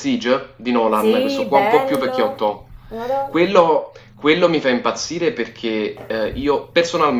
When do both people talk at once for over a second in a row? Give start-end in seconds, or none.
0.9-2.4